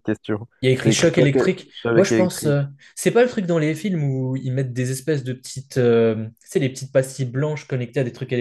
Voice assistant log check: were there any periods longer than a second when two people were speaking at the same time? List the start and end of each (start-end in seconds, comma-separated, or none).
0.6-2.6